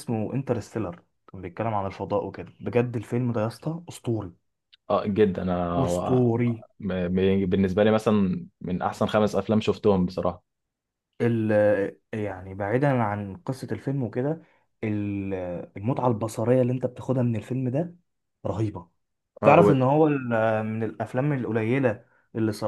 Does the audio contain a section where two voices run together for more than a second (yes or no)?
no